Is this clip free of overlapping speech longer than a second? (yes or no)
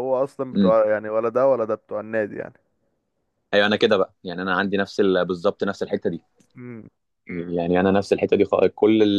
yes